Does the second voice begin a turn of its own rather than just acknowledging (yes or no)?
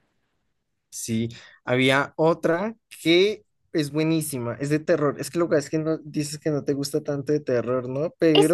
yes